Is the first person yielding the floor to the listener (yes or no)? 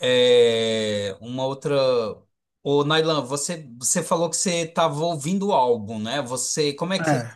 no